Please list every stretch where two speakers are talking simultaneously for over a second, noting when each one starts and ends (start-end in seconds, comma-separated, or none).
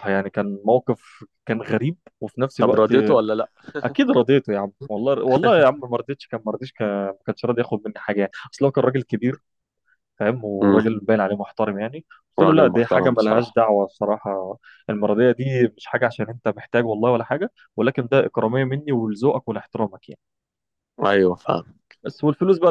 12.4-13.6